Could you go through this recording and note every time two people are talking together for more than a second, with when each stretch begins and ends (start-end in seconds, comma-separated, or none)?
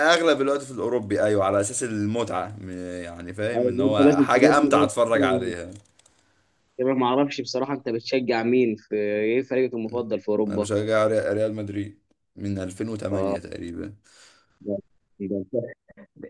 3.6-4.9